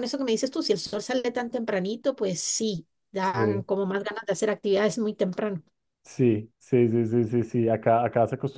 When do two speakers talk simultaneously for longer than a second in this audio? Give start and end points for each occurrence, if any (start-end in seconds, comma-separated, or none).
none